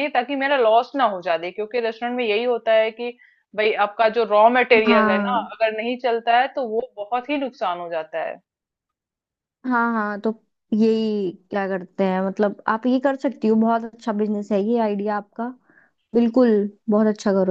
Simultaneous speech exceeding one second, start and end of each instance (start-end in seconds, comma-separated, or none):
none